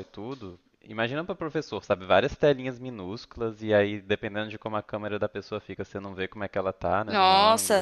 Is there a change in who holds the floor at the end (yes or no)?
yes